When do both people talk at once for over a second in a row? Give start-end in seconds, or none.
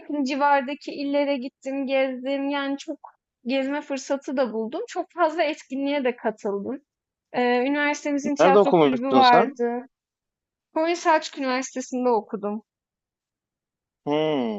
8.4-9.6